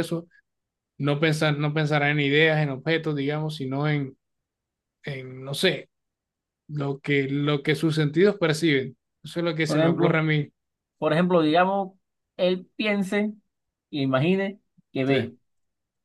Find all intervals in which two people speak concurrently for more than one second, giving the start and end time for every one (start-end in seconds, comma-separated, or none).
none